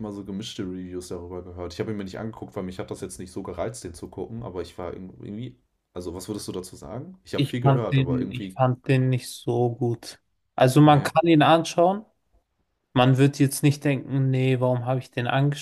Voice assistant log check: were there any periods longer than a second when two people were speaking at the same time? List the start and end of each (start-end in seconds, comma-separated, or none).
7.3-8.6